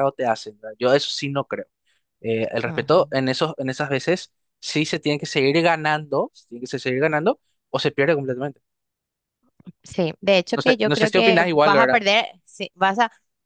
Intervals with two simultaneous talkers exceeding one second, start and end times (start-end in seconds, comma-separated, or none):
10.6-12.0